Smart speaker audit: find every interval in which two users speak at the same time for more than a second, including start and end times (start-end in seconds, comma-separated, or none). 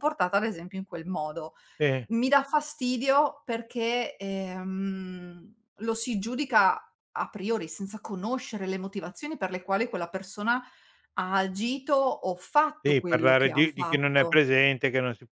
12.8-14.4